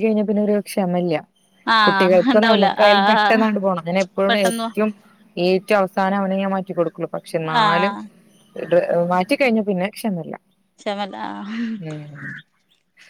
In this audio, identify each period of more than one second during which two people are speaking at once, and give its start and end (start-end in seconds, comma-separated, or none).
1.9-3.4